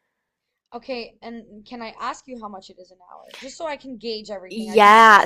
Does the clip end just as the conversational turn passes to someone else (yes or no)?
yes